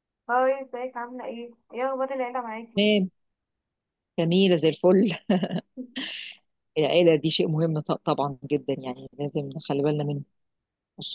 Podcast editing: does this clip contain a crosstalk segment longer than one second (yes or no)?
no